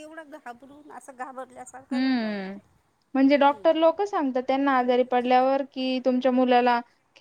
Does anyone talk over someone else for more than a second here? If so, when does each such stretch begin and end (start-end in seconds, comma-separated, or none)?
none